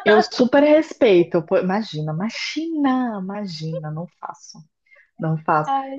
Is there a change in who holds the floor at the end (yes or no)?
no